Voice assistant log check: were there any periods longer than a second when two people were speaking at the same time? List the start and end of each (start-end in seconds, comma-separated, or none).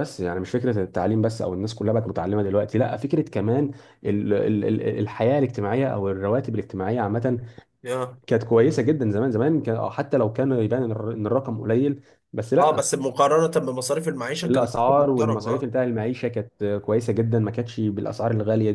14.4-15.7